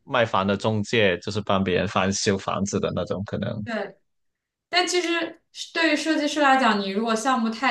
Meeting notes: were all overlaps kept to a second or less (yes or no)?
yes